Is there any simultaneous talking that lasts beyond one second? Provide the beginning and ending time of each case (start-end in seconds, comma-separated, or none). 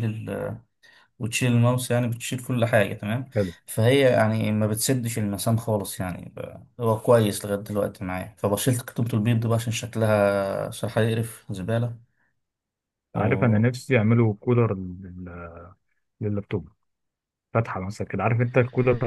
none